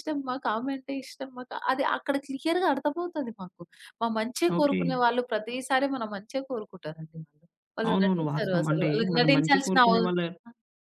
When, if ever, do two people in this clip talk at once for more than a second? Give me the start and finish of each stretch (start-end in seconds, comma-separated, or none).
7.9-9.9